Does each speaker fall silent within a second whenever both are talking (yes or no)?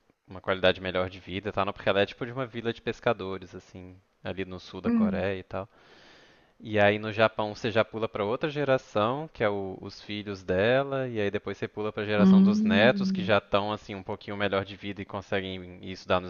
no